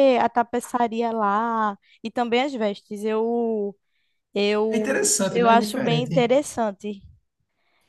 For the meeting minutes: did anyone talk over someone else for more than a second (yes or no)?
yes